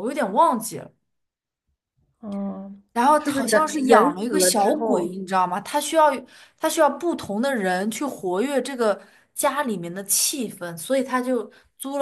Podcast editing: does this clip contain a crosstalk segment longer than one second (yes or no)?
yes